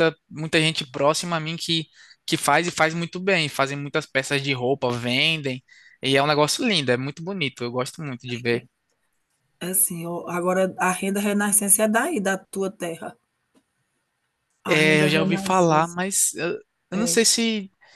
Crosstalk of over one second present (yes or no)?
yes